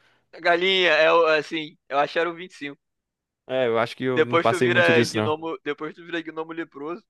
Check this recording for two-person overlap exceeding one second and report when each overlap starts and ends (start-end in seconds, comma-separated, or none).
4.2-5.3